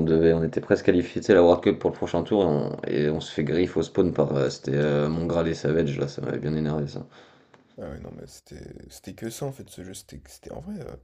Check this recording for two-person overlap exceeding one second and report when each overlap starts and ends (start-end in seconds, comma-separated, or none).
none